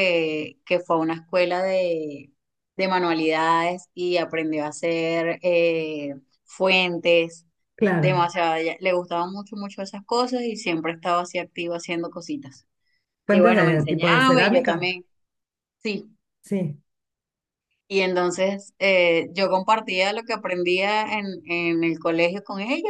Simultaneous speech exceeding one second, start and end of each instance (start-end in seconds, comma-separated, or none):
13.3-14.9